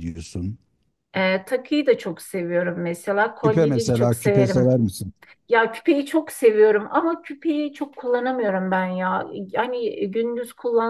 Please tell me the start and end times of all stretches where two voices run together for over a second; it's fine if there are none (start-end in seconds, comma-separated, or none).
3.4-4.8